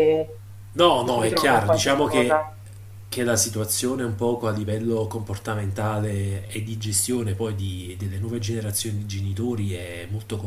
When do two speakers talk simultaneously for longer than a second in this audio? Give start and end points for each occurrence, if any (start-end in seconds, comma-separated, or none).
1.0-2.4